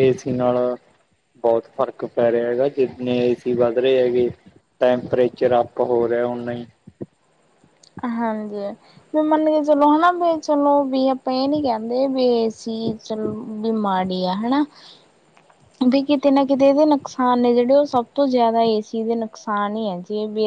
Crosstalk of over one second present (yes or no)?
no